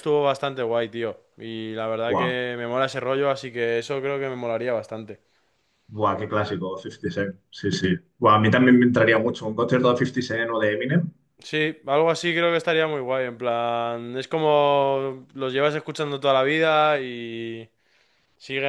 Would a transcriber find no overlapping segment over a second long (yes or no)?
yes